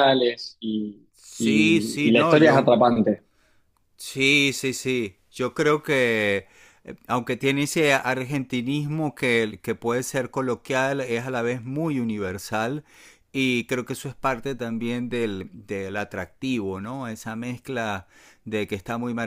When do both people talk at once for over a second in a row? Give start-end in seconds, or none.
1.1-2.7